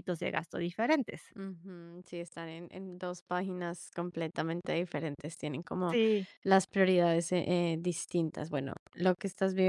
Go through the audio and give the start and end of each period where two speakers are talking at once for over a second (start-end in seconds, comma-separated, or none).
none